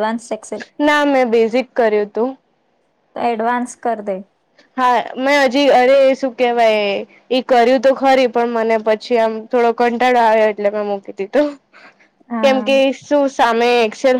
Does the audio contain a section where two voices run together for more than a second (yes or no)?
no